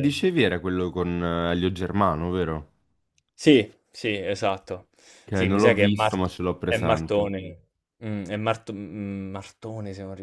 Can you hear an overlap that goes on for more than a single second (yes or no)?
yes